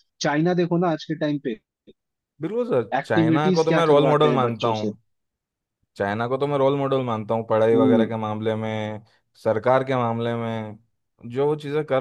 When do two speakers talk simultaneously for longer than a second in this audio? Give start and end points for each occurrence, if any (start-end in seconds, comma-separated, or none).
3.0-4.8